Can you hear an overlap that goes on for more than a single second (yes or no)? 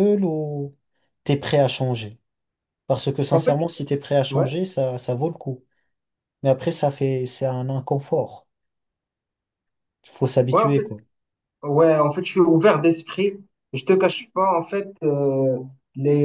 no